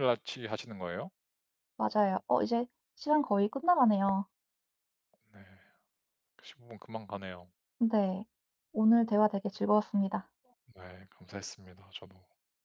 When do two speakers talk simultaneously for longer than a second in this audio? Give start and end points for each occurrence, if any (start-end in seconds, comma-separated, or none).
none